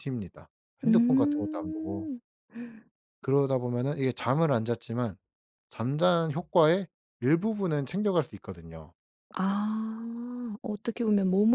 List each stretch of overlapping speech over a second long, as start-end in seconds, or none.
0.9-2.1